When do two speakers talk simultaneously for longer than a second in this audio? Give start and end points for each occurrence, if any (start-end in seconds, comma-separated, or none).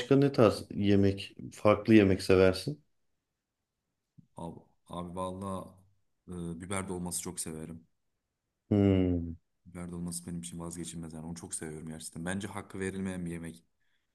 none